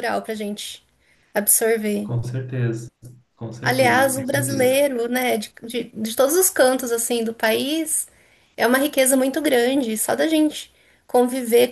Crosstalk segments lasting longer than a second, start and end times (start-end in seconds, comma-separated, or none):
3.6-4.8